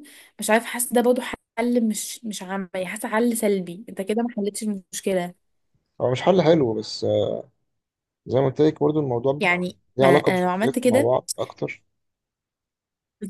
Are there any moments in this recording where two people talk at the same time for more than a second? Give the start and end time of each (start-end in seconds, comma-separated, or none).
9.4-11.1